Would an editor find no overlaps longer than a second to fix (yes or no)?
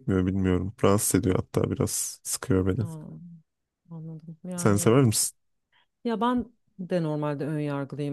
yes